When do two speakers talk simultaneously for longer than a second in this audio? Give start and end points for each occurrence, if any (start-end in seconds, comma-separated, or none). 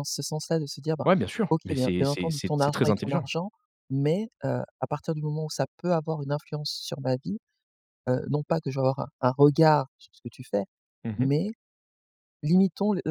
1.5-3.3